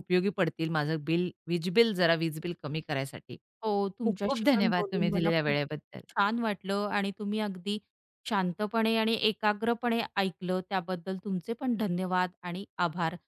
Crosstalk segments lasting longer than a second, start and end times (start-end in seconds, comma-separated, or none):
4.0-5.6